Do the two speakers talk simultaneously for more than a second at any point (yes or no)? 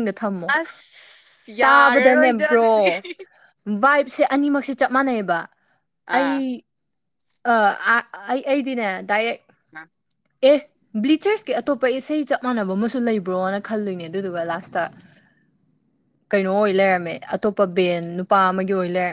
yes